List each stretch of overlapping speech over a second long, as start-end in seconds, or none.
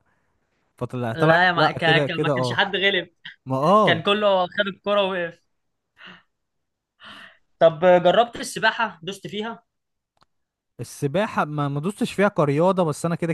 1.1-2.6